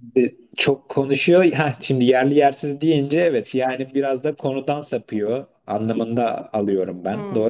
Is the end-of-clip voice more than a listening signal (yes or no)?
yes